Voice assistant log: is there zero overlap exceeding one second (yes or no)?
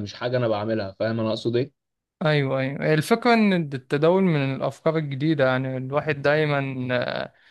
yes